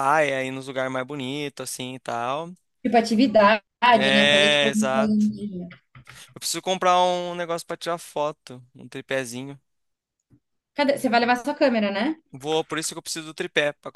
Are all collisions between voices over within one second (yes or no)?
no